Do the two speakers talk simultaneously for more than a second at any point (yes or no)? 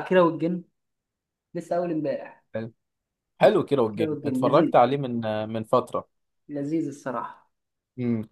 yes